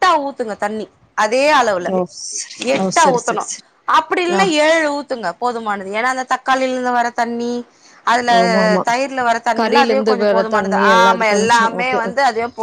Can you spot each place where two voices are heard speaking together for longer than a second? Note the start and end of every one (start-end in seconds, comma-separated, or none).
9.6-12.0